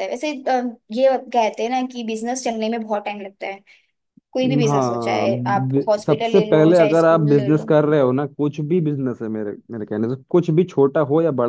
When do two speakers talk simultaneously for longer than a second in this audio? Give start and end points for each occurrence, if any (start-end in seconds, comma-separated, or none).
4.6-7.7